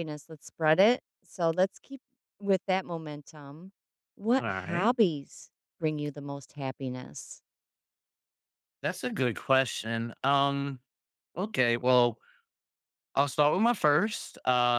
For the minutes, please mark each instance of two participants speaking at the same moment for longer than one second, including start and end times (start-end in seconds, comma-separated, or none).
none